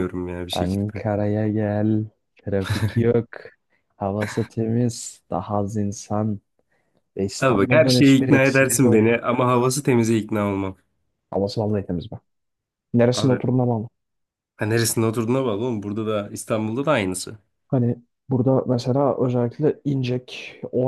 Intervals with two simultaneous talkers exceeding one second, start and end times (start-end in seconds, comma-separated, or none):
7.4-9.3